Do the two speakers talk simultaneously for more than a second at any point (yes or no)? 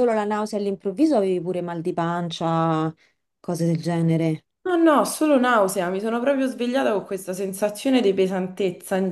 no